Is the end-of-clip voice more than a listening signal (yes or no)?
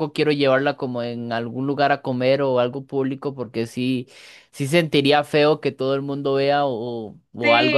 yes